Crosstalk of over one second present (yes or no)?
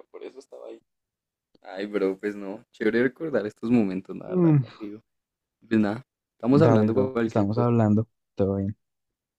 yes